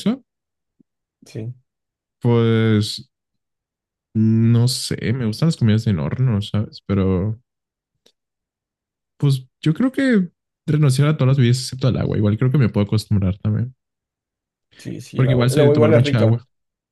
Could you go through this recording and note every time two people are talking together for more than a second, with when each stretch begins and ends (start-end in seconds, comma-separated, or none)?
15.1-16.4